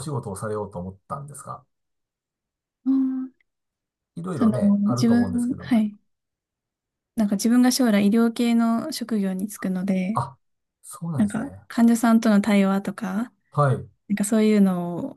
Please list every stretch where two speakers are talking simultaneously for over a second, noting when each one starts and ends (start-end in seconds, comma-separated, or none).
4.3-5.8